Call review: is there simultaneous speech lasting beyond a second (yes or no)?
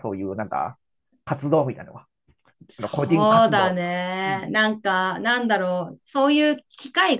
yes